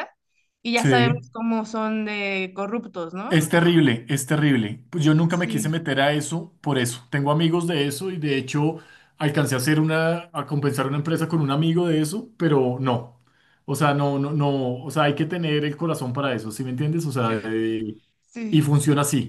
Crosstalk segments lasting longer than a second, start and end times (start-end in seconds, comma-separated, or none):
none